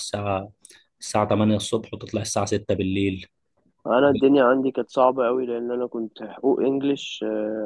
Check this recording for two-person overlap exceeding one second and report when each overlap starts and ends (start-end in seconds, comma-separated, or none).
none